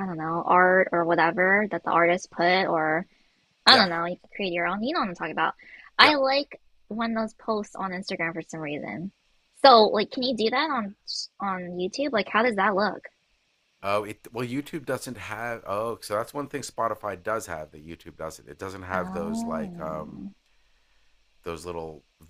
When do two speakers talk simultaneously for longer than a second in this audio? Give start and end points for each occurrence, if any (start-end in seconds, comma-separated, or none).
18.9-20.2